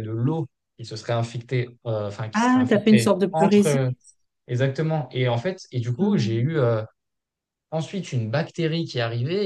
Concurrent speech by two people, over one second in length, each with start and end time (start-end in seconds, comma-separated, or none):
2.3-3.9